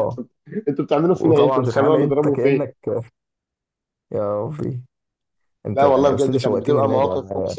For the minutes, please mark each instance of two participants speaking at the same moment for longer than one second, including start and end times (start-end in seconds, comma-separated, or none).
1.1-2.7, 5.7-7.1